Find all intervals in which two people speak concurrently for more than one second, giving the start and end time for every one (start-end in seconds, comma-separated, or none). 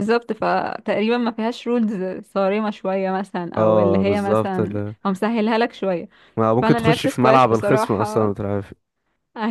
3.6-5.0, 6.6-8.3